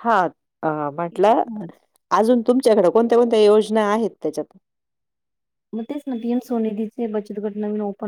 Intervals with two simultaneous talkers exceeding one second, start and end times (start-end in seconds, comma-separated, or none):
none